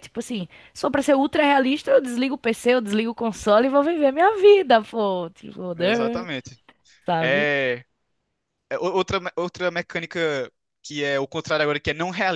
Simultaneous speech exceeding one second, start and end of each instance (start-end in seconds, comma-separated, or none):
none